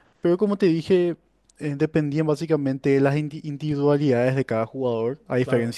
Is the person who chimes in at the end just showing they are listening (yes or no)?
yes